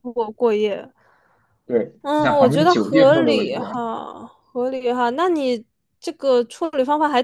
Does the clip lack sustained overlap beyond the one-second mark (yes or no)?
no